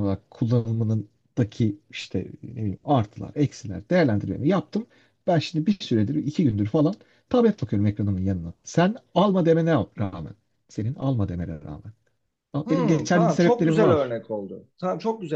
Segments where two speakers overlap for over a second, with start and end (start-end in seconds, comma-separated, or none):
12.7-14.2